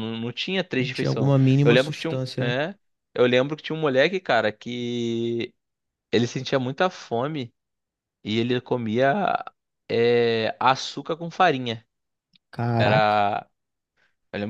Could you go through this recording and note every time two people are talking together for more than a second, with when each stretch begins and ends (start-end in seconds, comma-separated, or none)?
0.8-2.5